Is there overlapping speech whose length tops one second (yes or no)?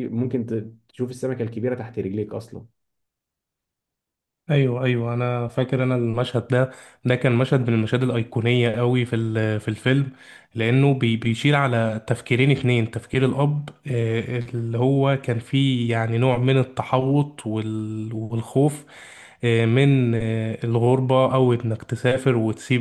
no